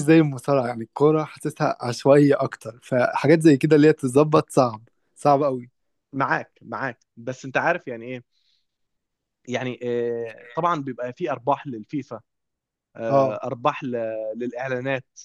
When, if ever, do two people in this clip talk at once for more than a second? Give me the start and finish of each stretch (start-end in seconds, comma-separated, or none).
none